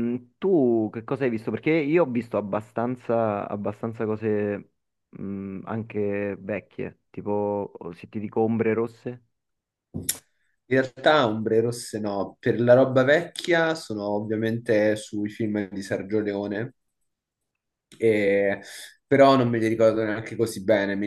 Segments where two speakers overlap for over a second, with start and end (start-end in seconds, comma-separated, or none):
none